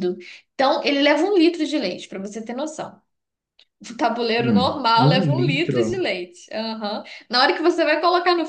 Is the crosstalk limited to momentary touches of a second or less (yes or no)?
no